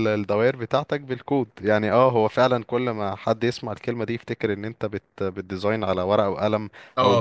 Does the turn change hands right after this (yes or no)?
yes